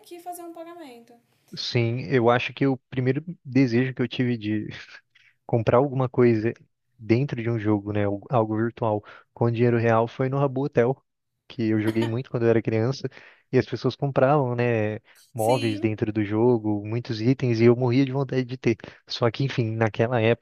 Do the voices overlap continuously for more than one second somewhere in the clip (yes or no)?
no